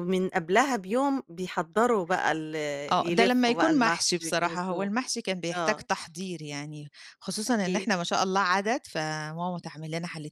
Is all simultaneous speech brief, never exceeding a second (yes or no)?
no